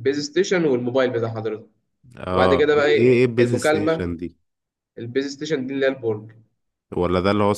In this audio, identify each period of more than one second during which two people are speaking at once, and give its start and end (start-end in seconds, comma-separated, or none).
2.3-4.1